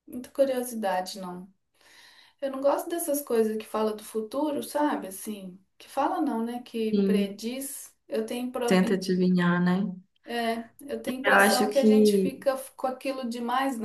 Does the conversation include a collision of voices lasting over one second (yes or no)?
yes